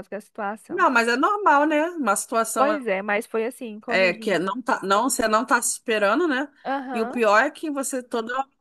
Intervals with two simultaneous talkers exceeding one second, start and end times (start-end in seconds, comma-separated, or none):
none